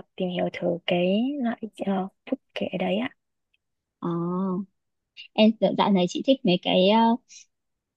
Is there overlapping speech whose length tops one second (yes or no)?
no